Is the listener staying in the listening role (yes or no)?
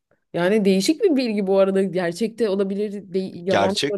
no